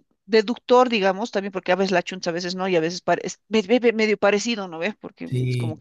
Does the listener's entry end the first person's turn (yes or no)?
no